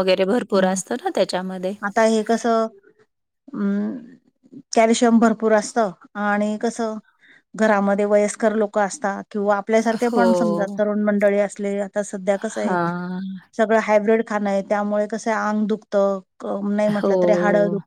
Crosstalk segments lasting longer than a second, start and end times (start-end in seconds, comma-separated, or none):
none